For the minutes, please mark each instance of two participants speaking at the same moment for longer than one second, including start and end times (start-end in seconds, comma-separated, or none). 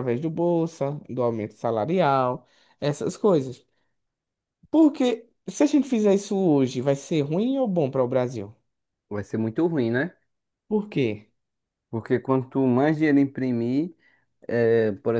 none